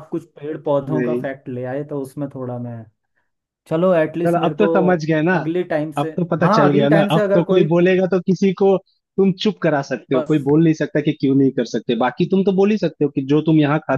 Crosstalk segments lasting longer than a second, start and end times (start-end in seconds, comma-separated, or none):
6.0-8.0